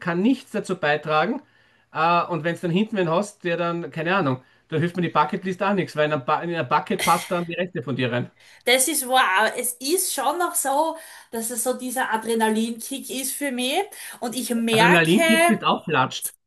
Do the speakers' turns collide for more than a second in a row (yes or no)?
no